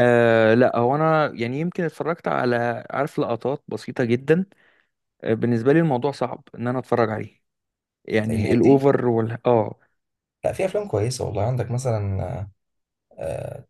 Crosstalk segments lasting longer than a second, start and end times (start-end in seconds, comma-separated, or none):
none